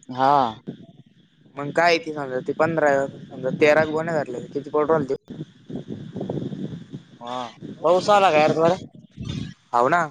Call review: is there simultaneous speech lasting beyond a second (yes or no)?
no